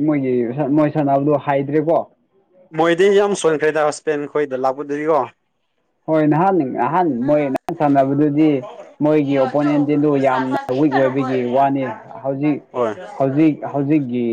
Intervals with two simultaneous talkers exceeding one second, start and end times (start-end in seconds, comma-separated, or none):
none